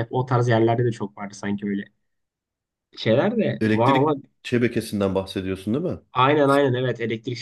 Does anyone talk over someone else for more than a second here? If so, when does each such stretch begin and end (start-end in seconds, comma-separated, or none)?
none